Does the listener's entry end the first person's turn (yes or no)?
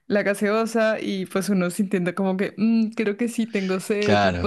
yes